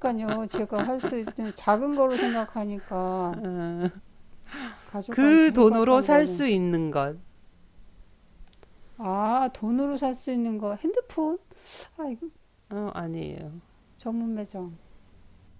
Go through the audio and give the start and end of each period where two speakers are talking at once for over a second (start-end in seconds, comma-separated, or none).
5.1-6.4